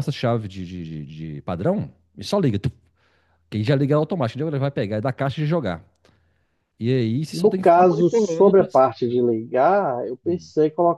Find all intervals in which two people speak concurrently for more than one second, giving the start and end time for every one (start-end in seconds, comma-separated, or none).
7.3-8.7